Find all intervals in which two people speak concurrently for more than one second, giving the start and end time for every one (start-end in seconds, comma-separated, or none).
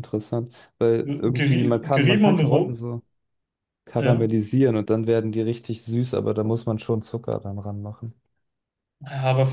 1.0-2.8